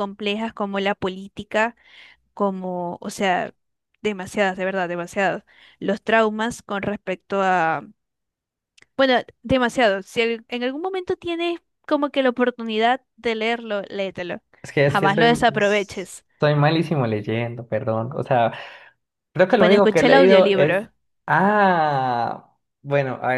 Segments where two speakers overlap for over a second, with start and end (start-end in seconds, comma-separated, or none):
19.6-20.9